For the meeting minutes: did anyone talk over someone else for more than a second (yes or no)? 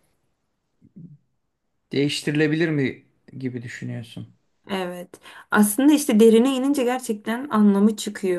no